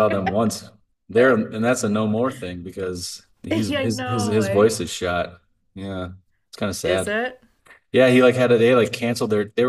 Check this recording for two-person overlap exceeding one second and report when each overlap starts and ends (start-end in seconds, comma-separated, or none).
3.5-4.8